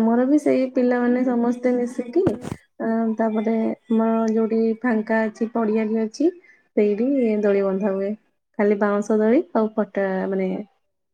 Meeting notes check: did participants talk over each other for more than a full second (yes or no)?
yes